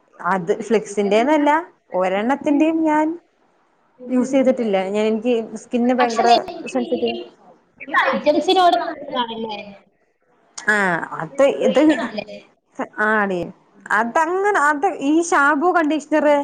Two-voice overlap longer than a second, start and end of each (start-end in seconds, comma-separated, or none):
none